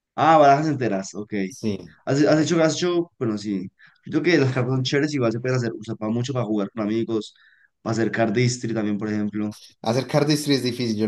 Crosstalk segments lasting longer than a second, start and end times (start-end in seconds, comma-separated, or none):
none